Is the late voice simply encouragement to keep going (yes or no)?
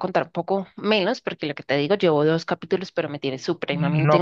no